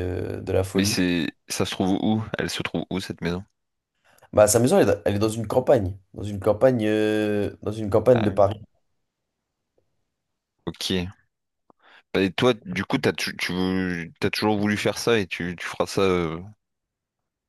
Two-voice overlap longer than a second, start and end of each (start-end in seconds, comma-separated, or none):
none